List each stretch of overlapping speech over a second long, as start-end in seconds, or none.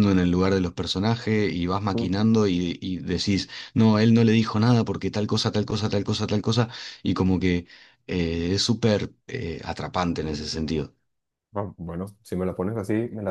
none